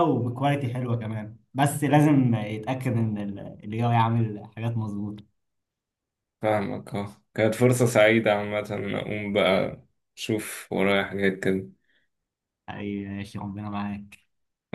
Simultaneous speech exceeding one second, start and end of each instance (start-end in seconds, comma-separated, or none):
none